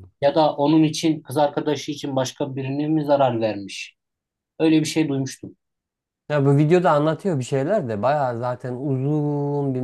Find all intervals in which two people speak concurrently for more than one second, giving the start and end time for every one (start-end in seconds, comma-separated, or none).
none